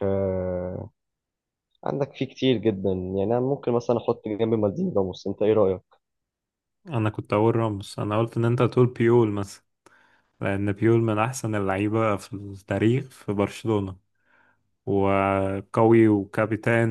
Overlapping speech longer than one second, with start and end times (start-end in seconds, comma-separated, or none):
none